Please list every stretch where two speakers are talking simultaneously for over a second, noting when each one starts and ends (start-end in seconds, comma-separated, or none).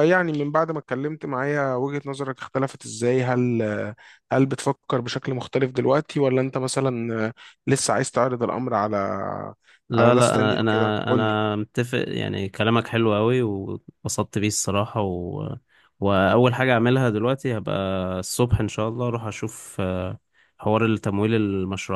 10.0-11.4